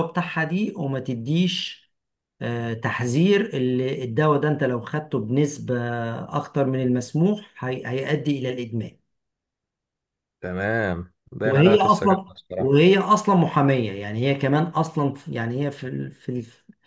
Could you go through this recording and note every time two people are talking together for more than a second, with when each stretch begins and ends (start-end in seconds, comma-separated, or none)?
11.4-12.9